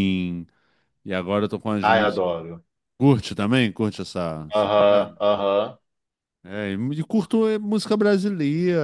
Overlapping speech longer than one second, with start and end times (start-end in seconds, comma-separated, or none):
none